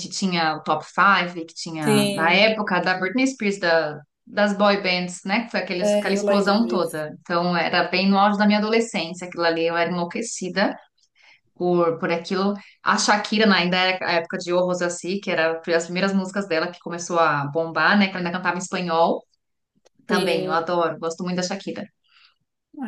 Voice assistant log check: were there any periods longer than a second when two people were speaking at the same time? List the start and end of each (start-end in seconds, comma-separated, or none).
5.8-7.0